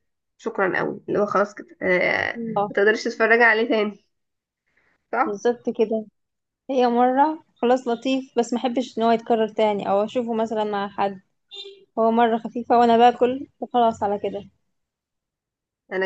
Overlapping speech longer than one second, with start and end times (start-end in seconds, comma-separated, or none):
none